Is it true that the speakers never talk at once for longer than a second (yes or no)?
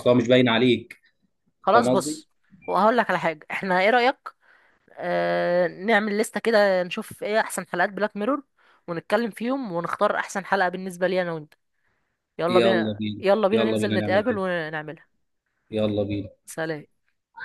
no